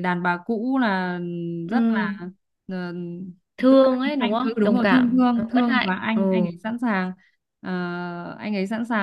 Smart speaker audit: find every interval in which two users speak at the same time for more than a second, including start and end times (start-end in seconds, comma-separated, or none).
3.7-6.2